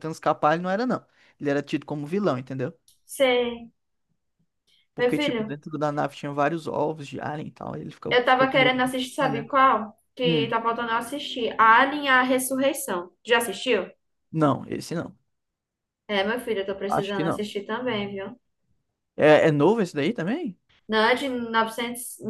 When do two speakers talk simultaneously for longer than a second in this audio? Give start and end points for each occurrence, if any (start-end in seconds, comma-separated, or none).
8.1-9.5